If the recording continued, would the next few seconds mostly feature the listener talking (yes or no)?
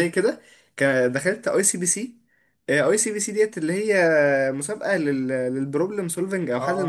yes